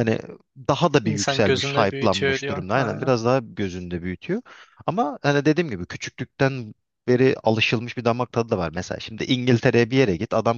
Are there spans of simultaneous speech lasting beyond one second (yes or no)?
yes